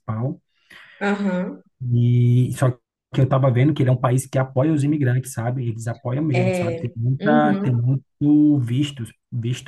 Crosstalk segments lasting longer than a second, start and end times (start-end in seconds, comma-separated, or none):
6.3-7.8